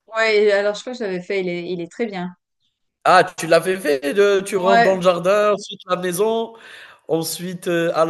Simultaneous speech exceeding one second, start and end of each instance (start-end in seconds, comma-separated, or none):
none